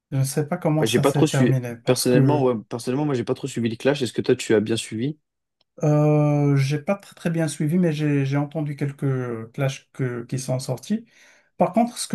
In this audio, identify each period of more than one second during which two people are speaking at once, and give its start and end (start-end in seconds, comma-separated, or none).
0.8-2.5